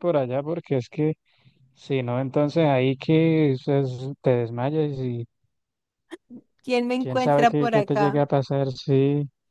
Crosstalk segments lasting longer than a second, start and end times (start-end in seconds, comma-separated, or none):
7.0-8.2